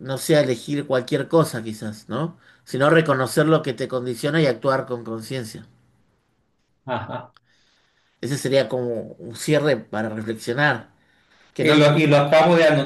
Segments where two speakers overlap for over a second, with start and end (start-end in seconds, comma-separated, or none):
none